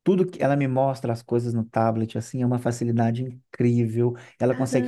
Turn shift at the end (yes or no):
no